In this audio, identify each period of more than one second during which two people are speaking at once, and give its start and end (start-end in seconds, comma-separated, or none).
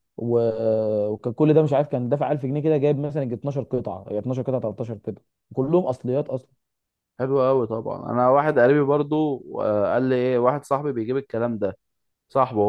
none